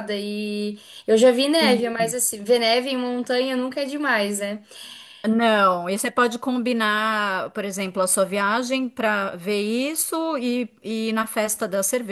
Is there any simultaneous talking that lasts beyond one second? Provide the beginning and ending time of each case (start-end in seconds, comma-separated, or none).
none